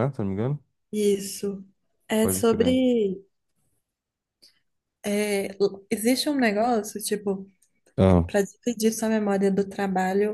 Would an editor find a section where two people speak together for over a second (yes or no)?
no